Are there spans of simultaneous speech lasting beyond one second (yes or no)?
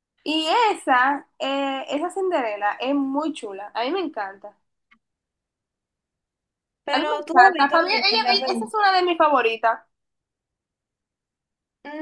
yes